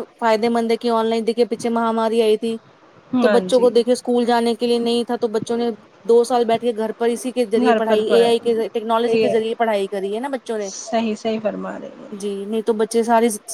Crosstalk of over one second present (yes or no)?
no